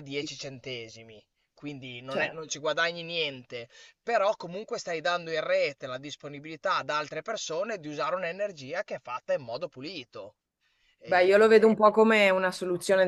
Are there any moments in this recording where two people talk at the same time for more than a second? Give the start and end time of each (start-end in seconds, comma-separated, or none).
none